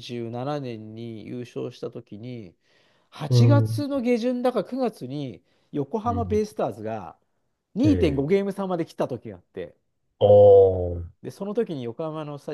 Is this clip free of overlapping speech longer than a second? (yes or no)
yes